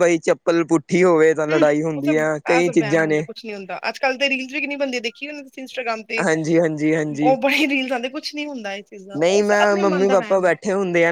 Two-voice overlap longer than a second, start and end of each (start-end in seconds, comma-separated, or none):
1.5-3.2, 9.2-10.5